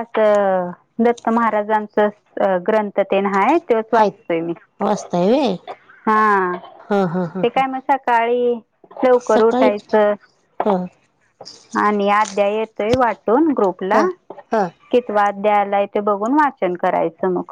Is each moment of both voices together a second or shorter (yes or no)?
yes